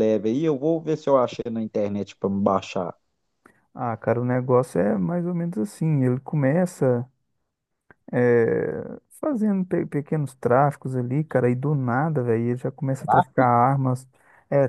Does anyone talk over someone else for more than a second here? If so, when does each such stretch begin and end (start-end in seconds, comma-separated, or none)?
none